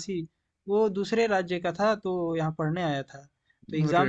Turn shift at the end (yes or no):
no